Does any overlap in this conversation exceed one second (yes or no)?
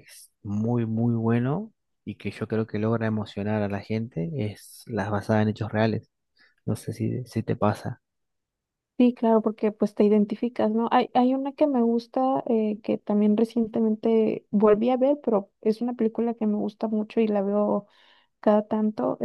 no